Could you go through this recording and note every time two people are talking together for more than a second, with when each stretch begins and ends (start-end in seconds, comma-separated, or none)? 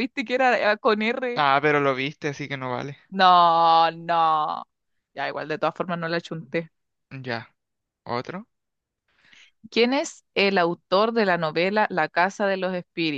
none